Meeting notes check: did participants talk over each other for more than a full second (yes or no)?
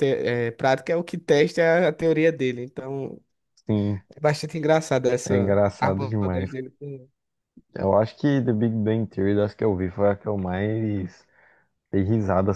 yes